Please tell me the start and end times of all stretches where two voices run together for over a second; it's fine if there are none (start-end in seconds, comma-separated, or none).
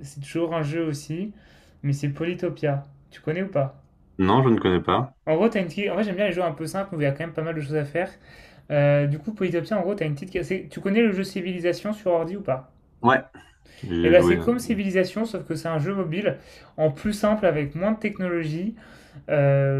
none